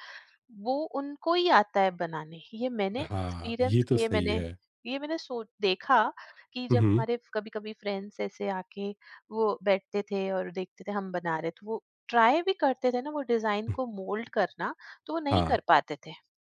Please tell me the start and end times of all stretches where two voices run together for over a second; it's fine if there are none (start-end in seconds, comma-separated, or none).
3.0-4.4